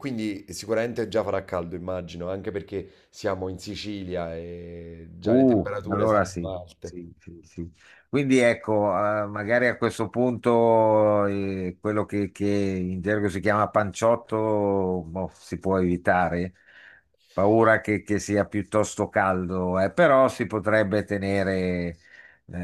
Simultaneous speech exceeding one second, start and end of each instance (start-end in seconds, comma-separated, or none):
5.2-7.0